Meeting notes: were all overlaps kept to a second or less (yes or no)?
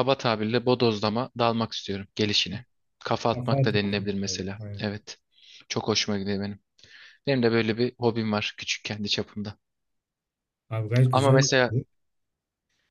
no